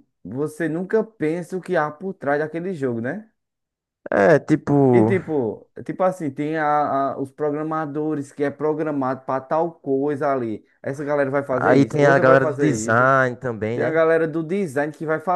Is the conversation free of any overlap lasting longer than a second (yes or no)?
no